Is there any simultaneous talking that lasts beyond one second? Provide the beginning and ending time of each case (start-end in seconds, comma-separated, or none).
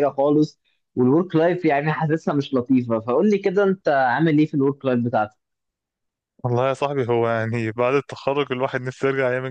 none